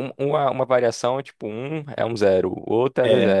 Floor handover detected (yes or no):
yes